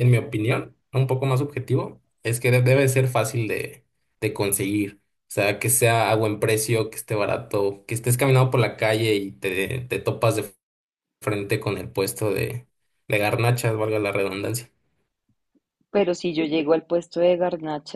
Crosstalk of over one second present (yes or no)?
no